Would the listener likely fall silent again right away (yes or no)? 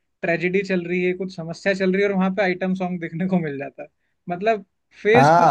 yes